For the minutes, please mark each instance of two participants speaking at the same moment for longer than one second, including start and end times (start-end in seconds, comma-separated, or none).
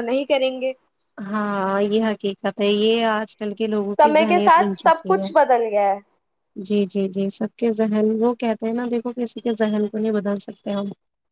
4.0-5.3